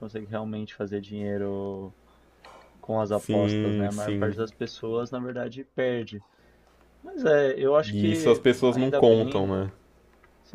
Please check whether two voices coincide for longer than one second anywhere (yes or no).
yes